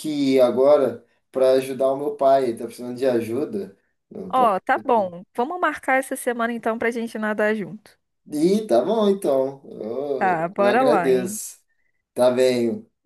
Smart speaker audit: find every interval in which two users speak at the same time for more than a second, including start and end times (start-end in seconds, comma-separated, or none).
10.2-11.4